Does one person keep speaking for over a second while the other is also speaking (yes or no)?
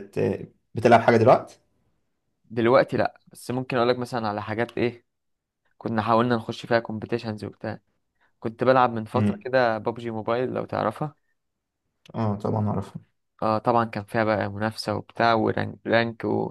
no